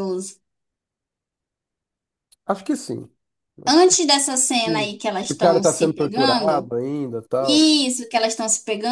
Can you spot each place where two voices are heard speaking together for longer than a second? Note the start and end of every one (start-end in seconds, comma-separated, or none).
4.7-6.7